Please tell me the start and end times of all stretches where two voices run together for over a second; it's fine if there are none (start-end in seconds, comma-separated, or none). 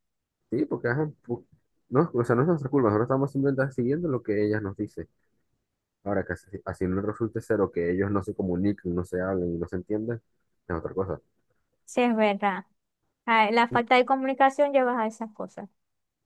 none